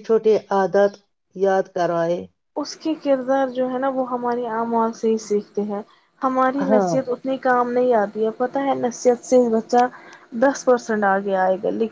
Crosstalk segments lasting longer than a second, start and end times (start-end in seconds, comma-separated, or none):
none